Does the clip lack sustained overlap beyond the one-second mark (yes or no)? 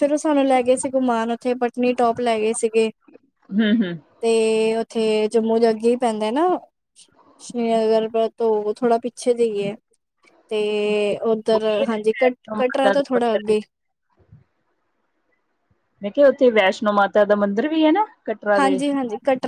no